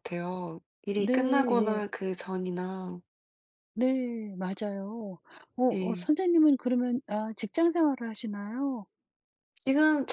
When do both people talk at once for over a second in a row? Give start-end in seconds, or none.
none